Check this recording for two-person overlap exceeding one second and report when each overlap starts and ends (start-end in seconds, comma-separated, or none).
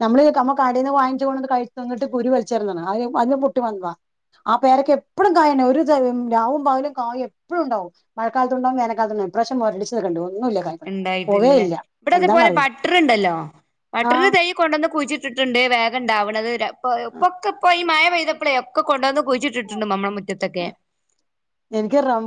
none